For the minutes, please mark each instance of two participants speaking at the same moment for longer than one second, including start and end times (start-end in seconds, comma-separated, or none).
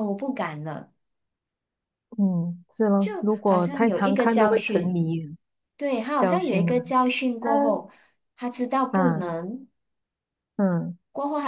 3.0-5.0